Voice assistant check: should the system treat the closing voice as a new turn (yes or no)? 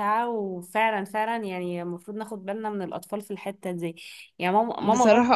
no